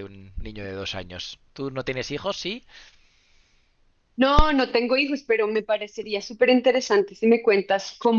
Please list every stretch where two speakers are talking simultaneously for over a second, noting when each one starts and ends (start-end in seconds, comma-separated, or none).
none